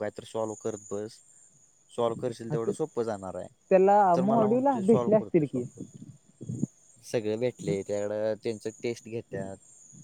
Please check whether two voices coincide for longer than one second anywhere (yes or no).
yes